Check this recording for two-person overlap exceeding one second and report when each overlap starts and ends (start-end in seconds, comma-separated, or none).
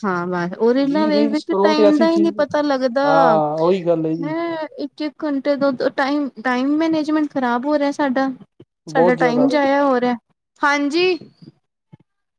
0.9-2.4